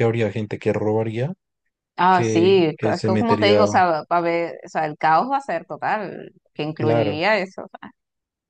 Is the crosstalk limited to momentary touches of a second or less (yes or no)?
no